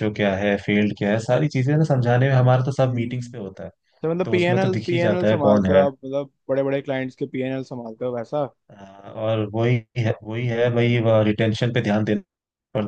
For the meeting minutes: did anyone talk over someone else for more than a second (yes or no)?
yes